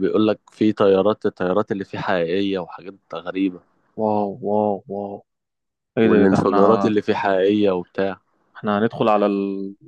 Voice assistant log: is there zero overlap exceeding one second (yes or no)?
yes